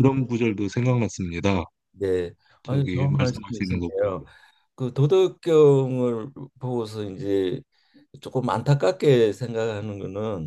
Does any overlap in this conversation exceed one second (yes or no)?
yes